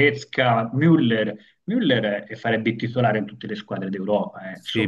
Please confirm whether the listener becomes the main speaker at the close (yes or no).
yes